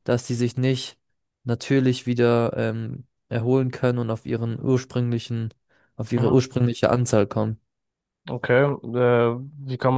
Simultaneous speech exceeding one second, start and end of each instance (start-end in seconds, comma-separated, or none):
none